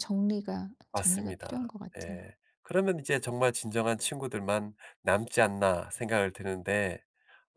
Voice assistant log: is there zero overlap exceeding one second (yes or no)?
no